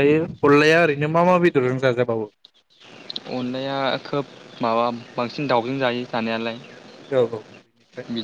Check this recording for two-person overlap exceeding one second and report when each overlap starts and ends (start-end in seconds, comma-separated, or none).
none